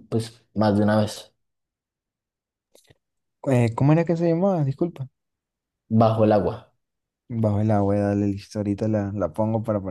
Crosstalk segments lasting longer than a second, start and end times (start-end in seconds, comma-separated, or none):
none